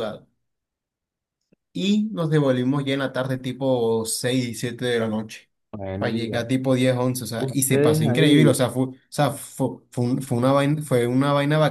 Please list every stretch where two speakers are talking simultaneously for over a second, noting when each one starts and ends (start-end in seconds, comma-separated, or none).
7.4-8.6